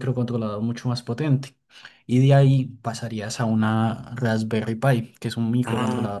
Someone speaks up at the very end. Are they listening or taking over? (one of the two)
listening